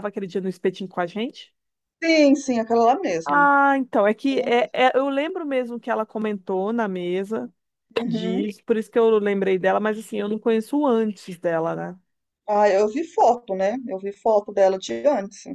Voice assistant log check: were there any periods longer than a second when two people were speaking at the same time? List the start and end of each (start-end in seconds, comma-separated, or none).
none